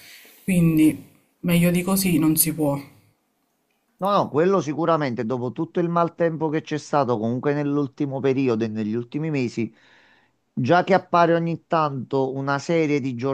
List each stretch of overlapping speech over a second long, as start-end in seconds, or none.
none